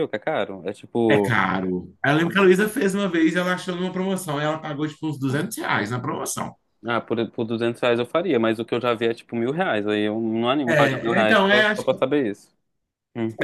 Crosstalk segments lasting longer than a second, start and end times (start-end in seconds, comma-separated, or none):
10.7-12.0